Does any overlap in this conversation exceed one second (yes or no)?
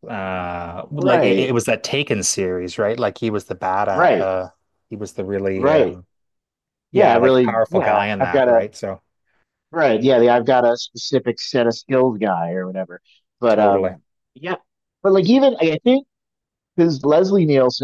yes